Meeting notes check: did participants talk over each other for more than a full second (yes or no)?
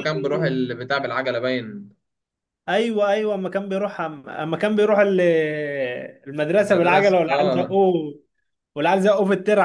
yes